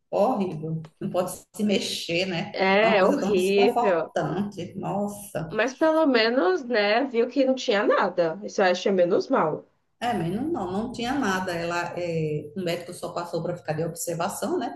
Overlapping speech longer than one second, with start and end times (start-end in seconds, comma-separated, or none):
2.5-4.1